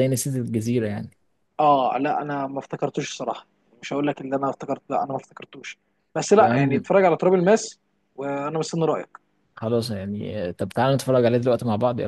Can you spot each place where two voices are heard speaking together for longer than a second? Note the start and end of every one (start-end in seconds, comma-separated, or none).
none